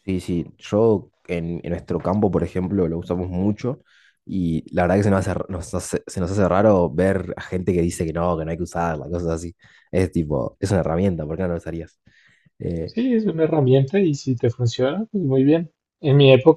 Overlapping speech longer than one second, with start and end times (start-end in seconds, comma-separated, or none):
none